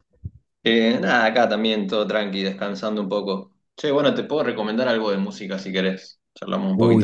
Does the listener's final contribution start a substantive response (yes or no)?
yes